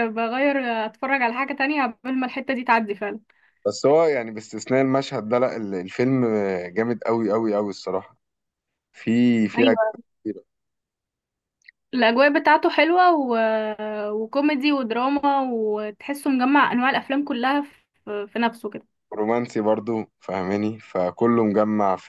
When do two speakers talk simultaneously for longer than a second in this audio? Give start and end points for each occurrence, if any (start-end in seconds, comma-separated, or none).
none